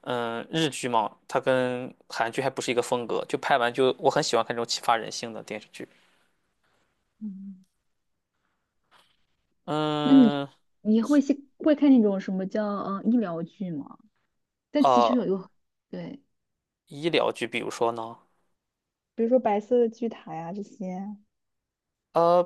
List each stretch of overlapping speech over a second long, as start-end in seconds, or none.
none